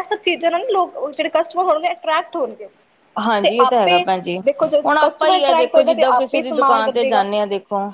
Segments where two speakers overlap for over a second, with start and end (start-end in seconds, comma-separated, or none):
5.0-7.2